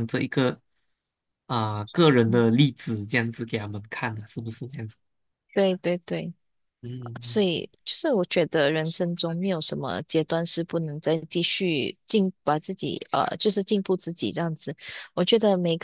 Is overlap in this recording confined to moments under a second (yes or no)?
yes